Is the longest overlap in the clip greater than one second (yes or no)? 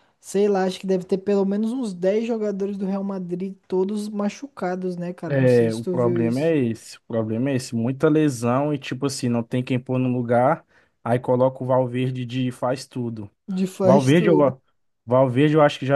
yes